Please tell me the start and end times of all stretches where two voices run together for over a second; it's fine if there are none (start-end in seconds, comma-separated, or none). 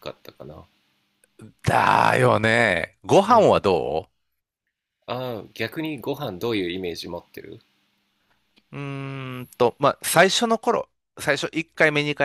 none